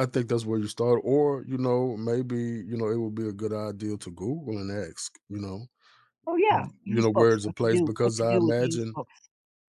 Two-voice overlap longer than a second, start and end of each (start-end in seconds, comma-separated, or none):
6.5-9.0